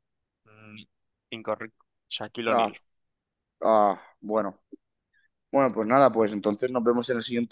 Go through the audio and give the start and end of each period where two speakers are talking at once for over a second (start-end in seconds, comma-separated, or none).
none